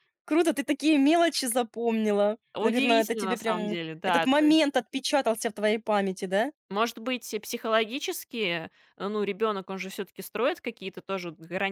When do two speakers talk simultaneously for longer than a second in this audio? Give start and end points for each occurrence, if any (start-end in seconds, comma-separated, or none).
2.5-4.3